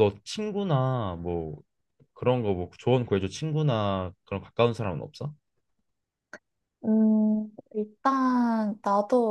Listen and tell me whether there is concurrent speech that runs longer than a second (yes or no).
no